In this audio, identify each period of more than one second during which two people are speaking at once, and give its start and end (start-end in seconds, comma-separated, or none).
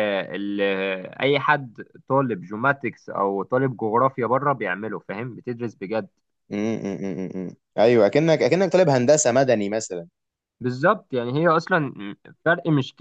none